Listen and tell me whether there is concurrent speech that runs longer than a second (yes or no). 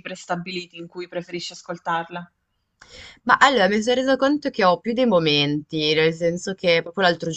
no